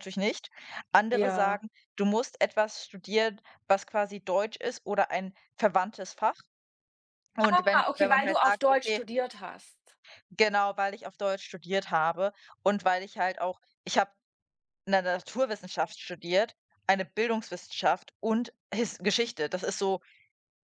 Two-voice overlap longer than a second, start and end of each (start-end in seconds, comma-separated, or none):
7.5-9.0